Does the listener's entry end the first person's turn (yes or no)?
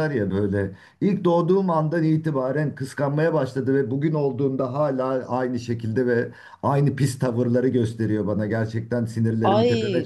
yes